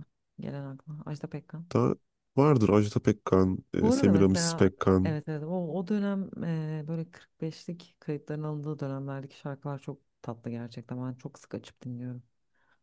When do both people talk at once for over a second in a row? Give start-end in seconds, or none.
3.8-5.2